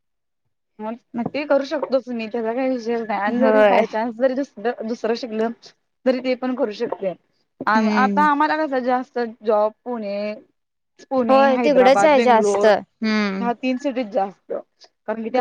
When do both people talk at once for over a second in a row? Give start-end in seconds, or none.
11.3-12.7